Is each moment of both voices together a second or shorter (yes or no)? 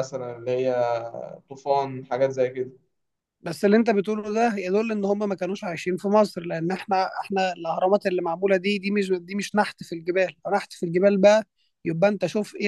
yes